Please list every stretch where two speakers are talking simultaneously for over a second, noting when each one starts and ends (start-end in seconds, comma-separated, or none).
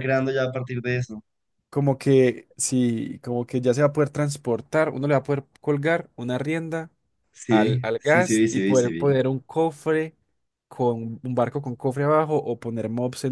7.5-9.2